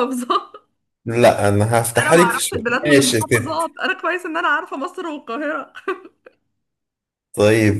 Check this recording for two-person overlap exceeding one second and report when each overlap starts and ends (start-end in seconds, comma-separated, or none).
2.0-3.6